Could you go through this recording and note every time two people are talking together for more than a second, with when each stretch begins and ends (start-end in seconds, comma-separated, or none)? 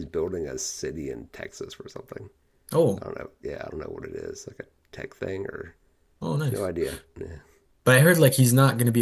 none